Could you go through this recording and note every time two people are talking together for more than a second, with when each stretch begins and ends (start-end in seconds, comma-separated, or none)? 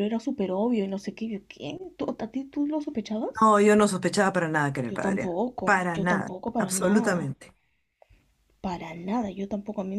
4.9-7.3